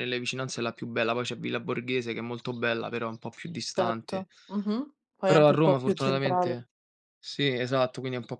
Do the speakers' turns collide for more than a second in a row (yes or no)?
yes